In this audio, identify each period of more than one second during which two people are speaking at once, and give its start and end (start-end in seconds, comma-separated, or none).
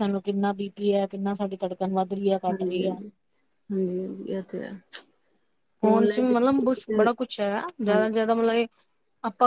5.8-7.0